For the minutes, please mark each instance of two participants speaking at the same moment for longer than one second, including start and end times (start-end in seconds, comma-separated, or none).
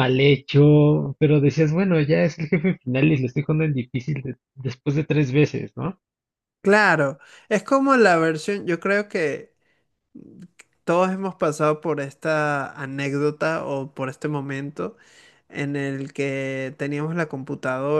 none